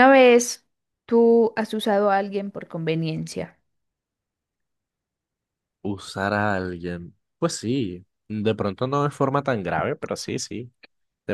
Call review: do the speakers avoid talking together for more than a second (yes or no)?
yes